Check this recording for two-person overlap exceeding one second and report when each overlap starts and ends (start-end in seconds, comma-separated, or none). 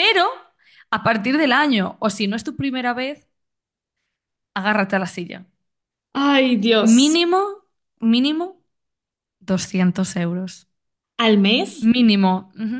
none